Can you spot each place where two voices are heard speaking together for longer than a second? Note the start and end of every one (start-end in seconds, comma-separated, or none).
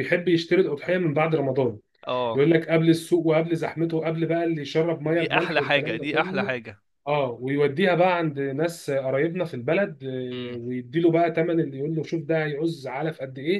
5.0-6.5